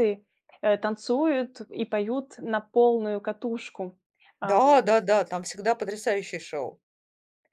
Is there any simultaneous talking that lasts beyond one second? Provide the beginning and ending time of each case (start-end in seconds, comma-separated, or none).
none